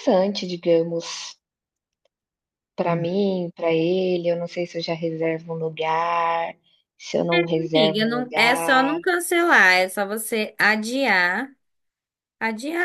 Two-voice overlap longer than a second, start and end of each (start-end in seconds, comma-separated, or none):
7.7-9.0